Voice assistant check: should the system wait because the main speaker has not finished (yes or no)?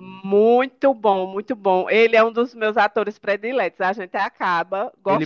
no